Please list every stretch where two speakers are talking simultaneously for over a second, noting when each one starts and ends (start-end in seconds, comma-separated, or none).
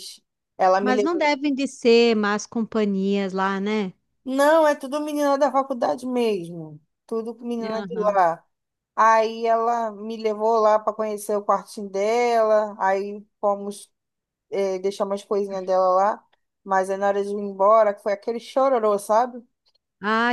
none